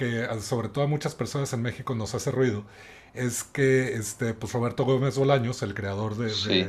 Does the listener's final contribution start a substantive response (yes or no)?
no